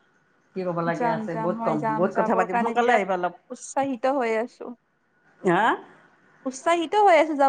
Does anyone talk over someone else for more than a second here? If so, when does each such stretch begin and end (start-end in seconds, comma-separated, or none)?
1.0-3.1